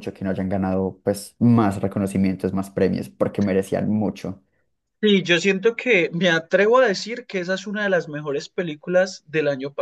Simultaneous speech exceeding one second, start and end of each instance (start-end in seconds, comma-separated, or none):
none